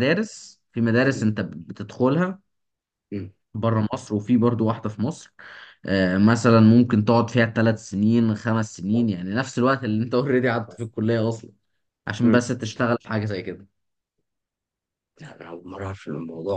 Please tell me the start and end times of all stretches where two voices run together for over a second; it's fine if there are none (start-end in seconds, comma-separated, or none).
none